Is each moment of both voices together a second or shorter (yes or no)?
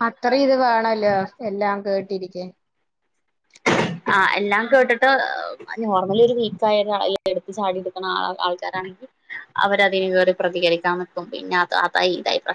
yes